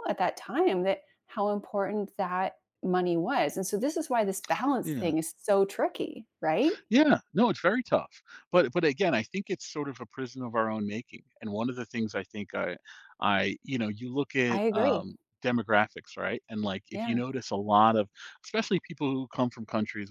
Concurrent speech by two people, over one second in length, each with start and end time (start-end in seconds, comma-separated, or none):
none